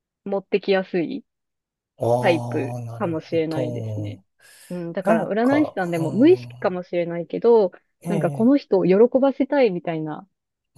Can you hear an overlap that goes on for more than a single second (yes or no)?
yes